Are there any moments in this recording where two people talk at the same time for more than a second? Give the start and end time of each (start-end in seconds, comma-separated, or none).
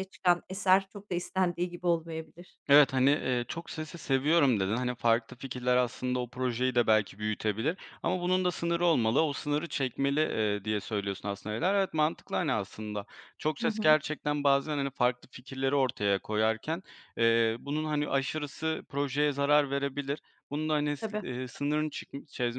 none